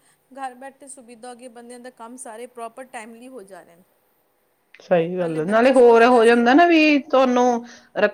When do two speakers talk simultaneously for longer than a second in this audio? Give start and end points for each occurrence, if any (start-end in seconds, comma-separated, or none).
none